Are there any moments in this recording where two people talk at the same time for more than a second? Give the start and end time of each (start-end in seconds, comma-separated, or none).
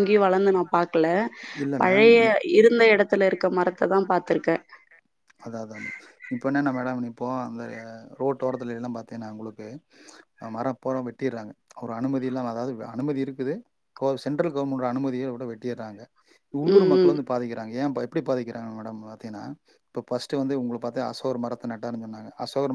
none